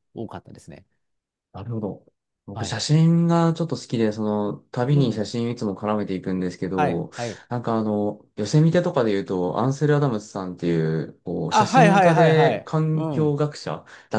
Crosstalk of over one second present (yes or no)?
yes